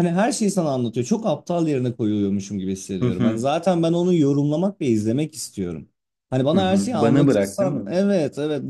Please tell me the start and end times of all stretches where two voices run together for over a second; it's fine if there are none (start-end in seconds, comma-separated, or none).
6.5-7.9